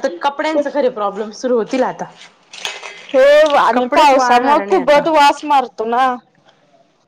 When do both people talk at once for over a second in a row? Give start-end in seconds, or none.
3.7-5.0